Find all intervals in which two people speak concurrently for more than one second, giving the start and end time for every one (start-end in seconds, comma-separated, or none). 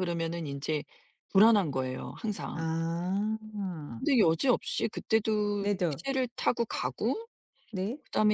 none